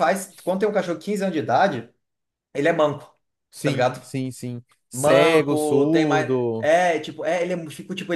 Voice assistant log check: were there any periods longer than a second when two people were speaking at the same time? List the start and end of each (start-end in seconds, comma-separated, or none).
4.9-6.7